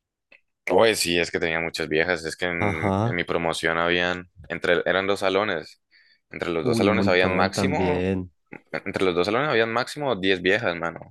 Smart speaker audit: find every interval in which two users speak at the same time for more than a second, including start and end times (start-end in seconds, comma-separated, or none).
6.6-8.1